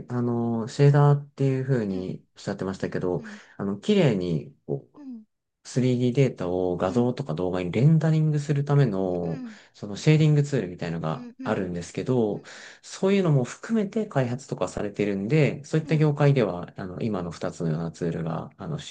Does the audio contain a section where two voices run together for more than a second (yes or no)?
no